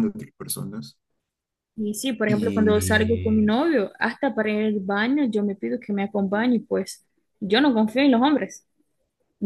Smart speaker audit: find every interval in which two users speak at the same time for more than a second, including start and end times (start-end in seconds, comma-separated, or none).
2.3-3.5